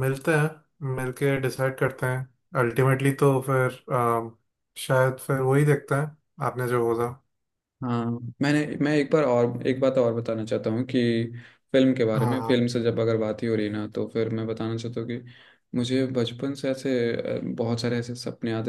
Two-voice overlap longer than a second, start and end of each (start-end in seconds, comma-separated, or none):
none